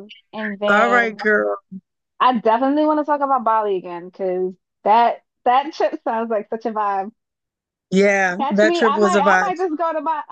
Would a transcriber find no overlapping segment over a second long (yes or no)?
no